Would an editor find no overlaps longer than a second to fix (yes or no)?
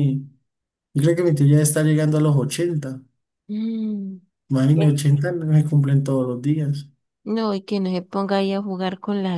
yes